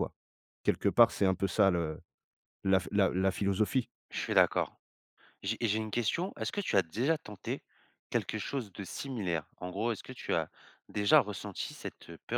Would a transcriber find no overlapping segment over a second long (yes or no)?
yes